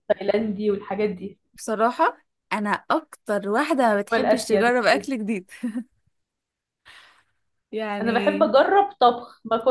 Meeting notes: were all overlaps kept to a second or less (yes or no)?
yes